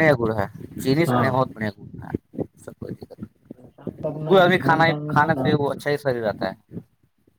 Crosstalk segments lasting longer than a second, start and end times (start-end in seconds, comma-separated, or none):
3.5-5.5